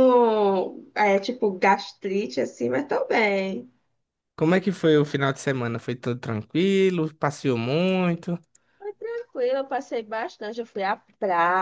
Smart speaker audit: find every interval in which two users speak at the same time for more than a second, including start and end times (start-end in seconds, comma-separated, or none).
none